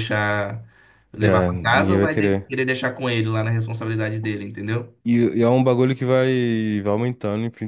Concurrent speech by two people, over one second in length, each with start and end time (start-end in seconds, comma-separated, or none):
1.2-2.5